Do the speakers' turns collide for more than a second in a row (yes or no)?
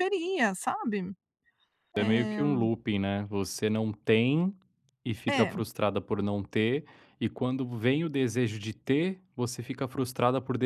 no